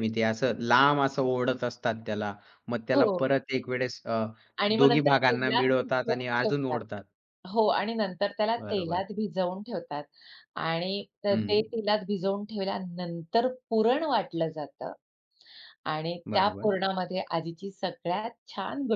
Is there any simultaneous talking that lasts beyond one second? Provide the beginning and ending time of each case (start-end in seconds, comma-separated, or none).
4.8-6.8